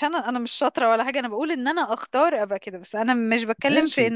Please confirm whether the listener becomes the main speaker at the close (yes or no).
no